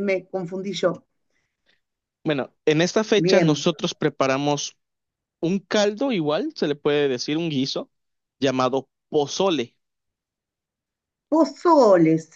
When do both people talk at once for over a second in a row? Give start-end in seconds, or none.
none